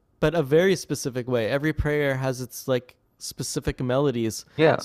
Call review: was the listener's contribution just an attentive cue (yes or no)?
yes